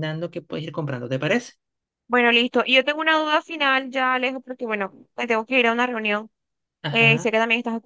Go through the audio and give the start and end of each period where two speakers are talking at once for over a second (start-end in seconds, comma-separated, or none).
none